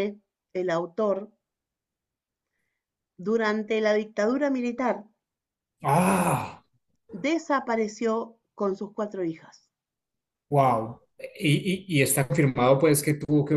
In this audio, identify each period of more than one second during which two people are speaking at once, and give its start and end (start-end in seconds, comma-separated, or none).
none